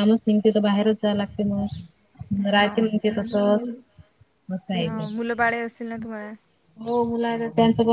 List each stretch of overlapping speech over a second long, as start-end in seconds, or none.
none